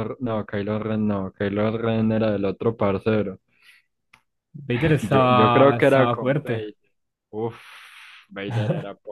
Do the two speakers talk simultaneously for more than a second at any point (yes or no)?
yes